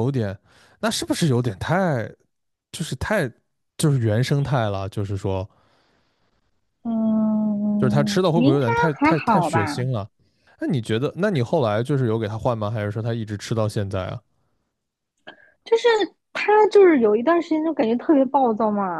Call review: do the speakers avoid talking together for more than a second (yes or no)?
no